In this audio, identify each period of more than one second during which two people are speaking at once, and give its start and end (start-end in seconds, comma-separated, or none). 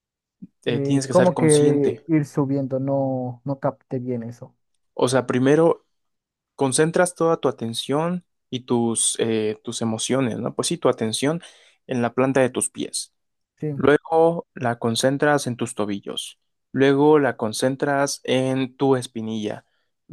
0.7-2.0